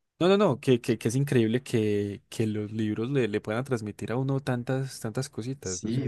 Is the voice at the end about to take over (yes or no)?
yes